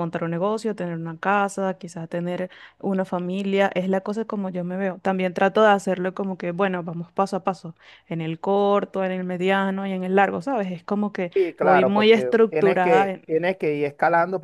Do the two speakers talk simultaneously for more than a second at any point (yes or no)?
yes